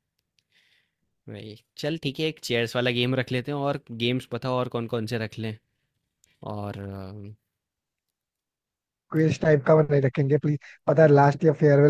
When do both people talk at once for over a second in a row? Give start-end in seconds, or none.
none